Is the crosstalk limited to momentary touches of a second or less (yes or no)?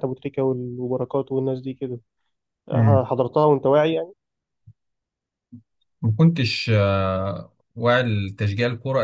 yes